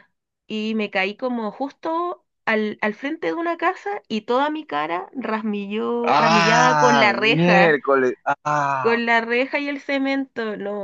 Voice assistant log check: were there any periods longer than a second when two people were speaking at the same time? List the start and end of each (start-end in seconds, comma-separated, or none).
6.0-7.8